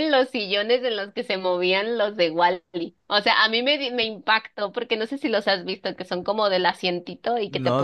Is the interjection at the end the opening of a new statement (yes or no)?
yes